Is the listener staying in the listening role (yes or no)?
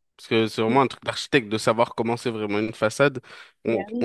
yes